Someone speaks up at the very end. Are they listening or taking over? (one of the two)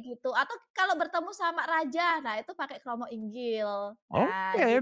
taking over